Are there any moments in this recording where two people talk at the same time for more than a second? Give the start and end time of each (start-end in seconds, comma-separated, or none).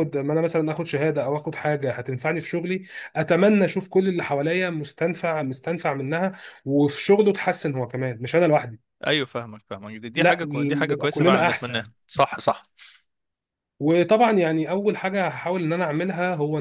10.1-11.8